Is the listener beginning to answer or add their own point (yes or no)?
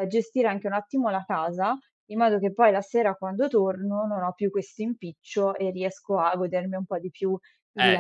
yes